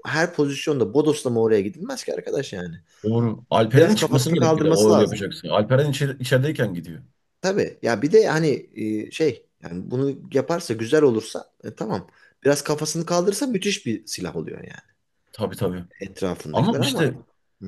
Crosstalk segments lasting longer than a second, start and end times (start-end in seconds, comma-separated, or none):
3.8-5.2